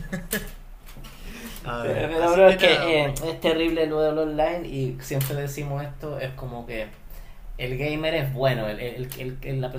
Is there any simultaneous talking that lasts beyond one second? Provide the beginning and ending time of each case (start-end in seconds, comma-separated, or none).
1.8-3.4